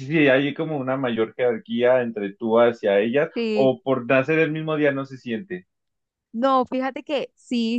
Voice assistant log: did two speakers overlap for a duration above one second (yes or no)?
no